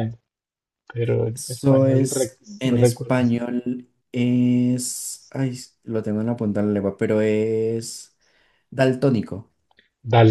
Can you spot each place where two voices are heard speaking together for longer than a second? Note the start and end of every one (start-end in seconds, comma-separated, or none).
1.3-3.2